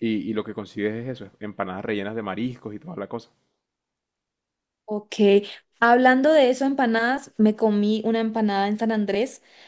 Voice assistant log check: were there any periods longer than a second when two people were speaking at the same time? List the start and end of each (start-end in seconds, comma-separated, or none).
none